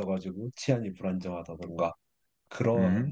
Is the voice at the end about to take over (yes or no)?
no